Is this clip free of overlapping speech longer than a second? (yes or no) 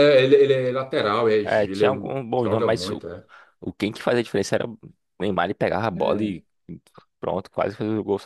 no